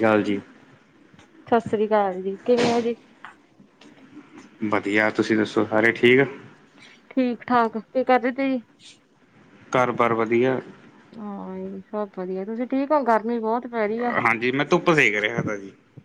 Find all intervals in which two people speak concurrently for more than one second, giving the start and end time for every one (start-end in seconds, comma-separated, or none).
none